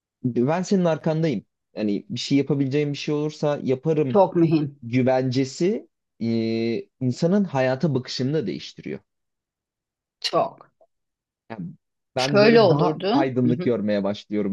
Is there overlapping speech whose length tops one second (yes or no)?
yes